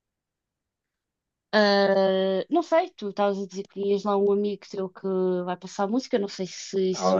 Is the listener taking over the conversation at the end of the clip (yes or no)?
yes